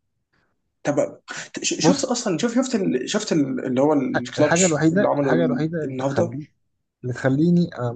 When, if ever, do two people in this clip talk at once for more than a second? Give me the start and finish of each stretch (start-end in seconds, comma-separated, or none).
4.4-6.4